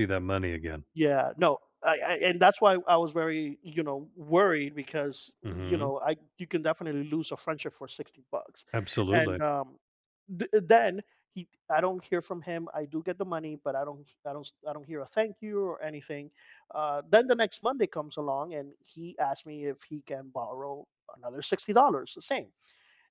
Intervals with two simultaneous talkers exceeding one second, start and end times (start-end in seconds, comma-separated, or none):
none